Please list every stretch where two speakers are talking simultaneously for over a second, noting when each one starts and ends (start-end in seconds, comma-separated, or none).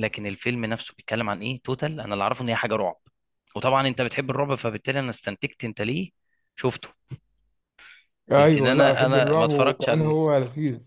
8.3-10.3